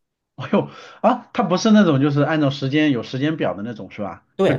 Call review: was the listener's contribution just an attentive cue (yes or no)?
no